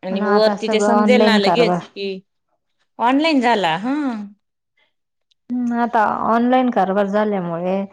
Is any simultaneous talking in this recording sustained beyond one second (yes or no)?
yes